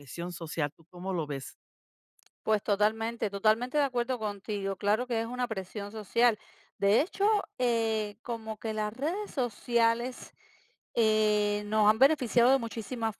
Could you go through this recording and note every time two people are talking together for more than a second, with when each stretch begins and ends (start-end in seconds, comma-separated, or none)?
none